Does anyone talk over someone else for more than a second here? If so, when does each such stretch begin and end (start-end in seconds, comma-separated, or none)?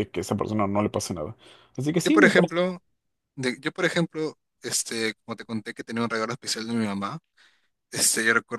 none